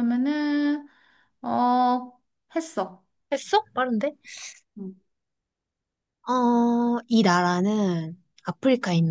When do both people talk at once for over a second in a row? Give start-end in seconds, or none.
none